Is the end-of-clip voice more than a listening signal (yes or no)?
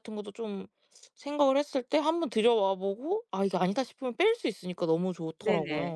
yes